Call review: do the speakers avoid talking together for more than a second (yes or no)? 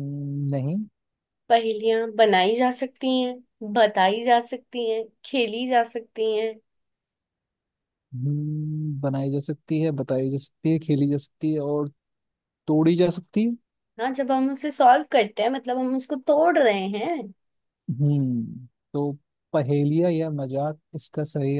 yes